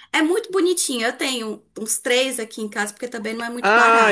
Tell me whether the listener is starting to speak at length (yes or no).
yes